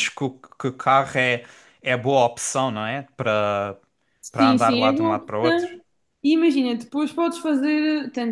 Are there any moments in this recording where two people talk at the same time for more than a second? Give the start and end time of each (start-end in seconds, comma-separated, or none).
4.3-5.7